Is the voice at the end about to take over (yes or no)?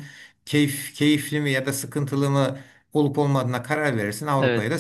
yes